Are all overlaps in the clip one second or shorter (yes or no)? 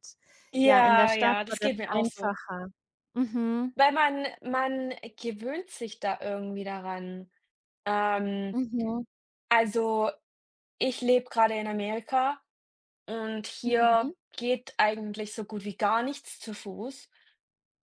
no